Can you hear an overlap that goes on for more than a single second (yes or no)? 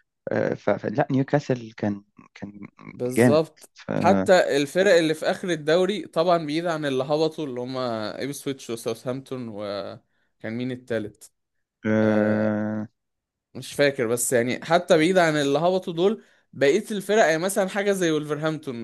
no